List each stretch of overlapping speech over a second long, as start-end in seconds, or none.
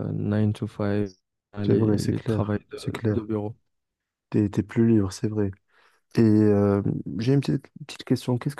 1.6-3.2